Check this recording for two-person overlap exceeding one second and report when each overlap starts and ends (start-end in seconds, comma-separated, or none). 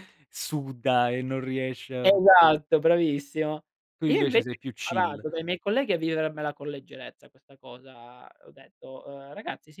4.0-5.2